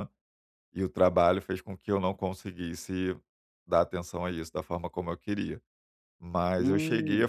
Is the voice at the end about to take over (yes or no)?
no